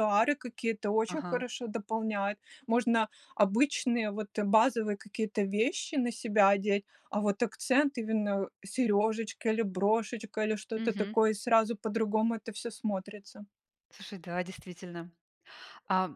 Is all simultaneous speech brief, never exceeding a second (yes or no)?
yes